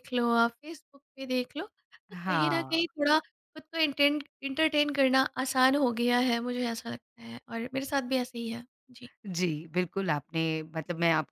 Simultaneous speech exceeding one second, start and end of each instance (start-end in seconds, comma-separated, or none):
none